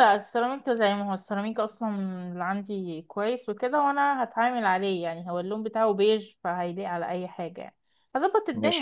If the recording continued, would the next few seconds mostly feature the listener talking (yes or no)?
no